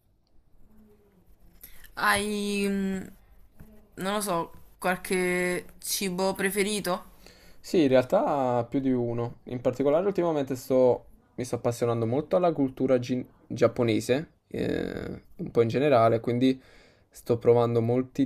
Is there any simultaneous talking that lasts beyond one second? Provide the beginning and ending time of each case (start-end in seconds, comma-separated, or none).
none